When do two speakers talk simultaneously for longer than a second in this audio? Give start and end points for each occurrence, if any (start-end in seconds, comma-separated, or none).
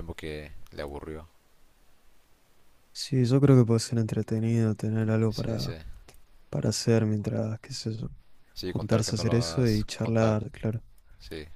8.6-10.4